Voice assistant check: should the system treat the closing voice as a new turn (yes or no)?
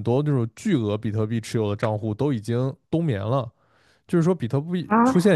no